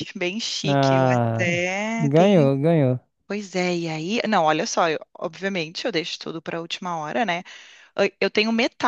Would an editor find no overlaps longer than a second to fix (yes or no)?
no